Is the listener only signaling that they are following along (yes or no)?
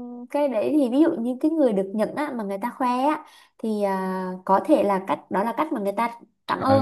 no